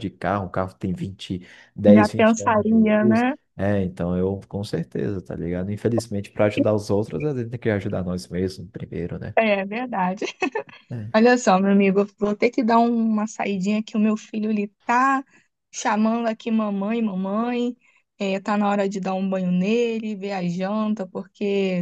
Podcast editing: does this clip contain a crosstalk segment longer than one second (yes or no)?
yes